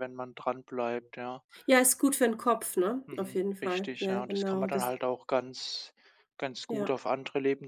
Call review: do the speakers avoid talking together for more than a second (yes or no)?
no